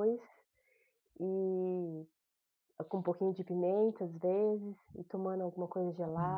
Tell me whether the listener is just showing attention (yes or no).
yes